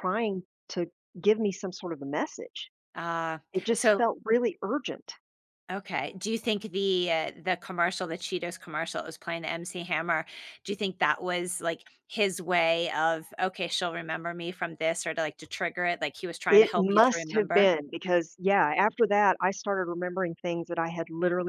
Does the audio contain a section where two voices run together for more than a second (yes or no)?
yes